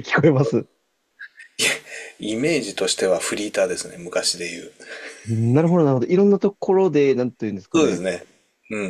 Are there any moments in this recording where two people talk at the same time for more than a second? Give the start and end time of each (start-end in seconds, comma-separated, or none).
none